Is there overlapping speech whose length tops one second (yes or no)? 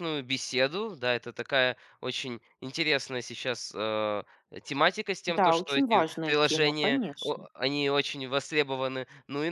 yes